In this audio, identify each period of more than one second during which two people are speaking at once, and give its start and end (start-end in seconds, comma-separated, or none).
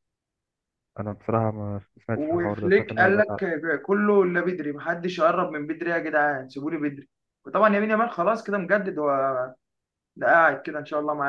2.1-3.5